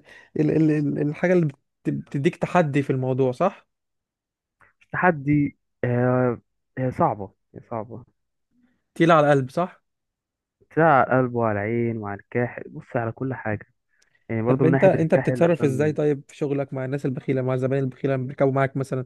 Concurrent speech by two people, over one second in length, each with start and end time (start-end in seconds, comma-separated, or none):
14.5-16.0